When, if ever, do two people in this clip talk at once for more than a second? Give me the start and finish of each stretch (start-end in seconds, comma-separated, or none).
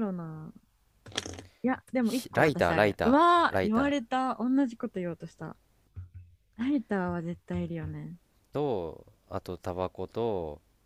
2.0-4.0